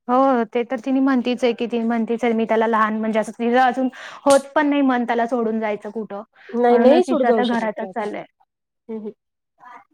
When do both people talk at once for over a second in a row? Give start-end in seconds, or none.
6.7-8.1